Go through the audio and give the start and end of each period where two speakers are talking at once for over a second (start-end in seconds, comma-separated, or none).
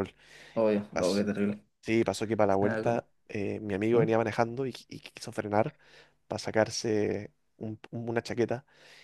none